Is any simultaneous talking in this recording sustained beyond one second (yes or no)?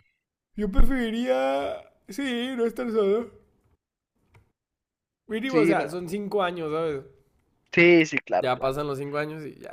no